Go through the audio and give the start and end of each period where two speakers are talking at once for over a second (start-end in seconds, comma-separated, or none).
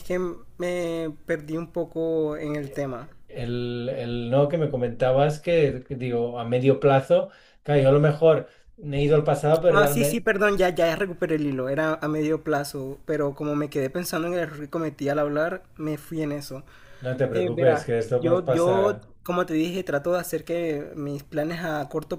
17.3-19.1